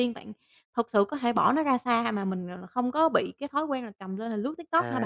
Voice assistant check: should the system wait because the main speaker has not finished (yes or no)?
no